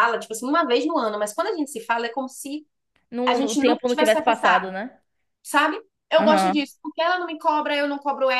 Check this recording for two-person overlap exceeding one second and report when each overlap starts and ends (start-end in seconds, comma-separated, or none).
3.3-4.7